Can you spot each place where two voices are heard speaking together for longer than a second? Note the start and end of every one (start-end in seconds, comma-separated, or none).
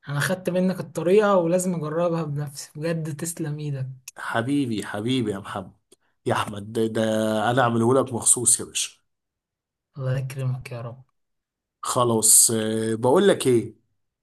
none